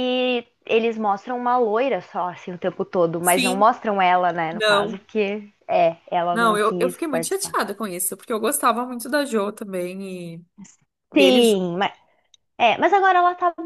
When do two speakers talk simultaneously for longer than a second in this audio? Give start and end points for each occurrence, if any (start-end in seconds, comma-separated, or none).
6.3-7.6